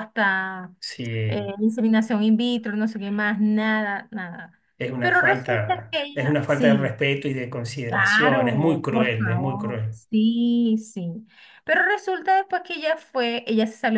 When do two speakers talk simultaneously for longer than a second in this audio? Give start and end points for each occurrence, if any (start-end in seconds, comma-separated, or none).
5.0-6.9, 7.9-10.0